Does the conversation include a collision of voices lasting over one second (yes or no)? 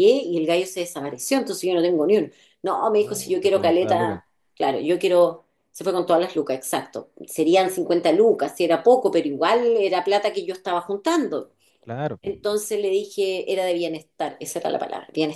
yes